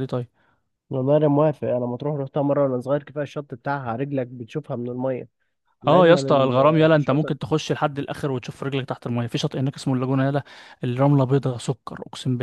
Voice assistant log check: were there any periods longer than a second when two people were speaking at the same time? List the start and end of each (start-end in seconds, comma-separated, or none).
5.9-7.3